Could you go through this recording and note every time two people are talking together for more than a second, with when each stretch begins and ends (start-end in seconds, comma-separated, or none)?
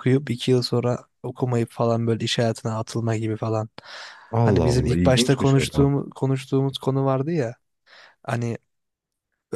4.4-5.9